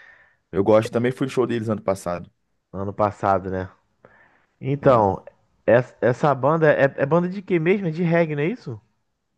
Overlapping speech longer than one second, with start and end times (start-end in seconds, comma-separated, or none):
none